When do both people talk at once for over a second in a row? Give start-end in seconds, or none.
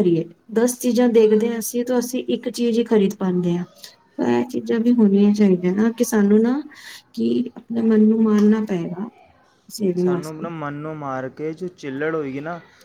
none